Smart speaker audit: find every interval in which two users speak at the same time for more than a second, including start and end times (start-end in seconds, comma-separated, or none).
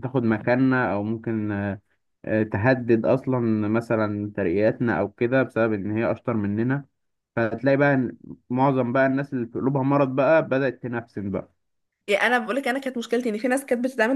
none